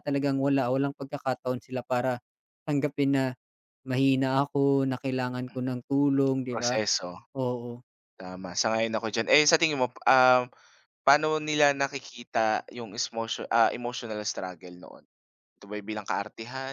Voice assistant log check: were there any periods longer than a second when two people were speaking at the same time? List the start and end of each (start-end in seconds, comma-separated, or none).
none